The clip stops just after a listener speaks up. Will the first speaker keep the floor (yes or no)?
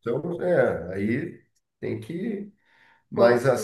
yes